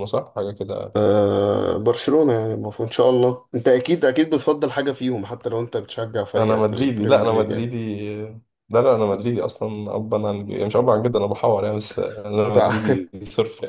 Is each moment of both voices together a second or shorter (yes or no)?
no